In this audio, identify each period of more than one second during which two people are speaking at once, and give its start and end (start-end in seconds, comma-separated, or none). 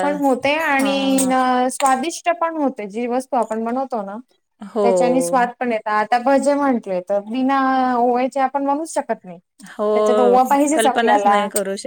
9.9-11.3